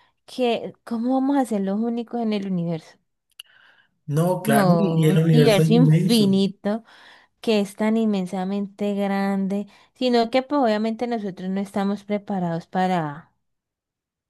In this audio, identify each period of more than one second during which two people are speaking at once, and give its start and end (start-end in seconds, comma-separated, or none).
4.4-6.3